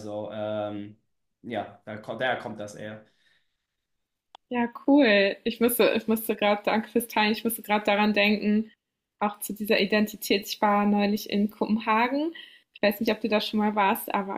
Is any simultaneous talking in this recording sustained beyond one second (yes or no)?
no